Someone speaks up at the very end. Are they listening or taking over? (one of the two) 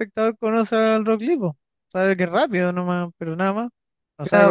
taking over